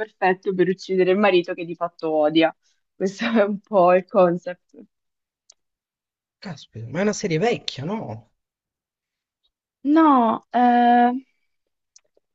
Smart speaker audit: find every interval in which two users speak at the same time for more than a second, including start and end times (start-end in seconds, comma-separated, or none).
none